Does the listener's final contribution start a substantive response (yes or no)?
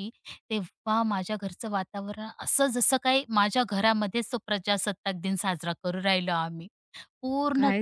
yes